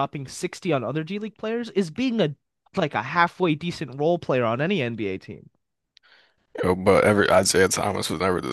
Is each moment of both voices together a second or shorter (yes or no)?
yes